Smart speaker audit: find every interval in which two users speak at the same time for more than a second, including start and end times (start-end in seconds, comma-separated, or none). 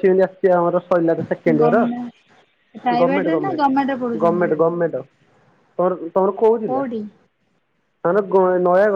3.0-4.5